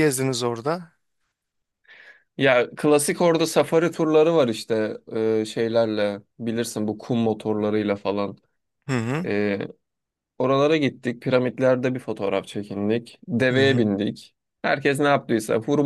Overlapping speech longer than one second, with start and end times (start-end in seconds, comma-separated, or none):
none